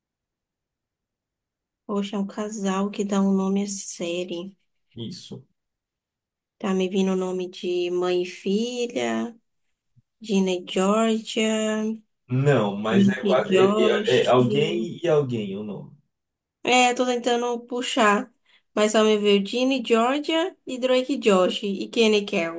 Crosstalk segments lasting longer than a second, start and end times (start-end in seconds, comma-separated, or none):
12.9-14.3